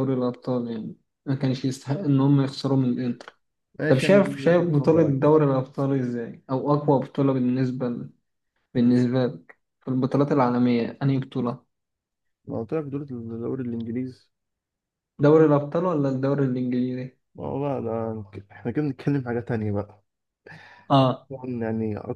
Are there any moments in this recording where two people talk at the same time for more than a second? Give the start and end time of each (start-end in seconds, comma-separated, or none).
3.9-5.4